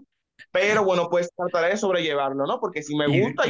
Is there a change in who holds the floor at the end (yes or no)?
yes